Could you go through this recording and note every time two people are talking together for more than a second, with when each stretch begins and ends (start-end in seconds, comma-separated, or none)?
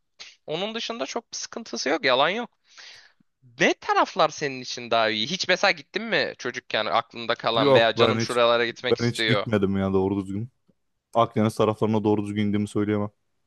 7.6-9.5